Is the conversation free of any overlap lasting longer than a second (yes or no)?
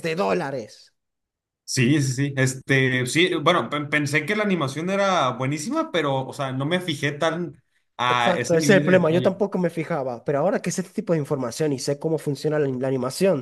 no